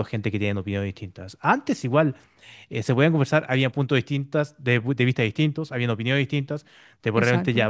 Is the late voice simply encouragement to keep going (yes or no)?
yes